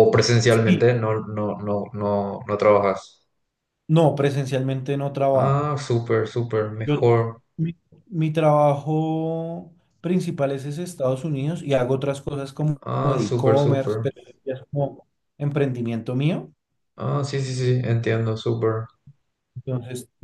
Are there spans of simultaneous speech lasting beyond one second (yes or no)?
yes